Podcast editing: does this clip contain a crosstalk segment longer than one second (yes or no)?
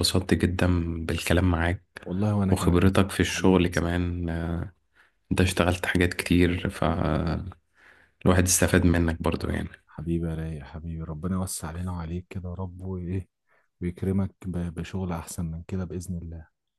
yes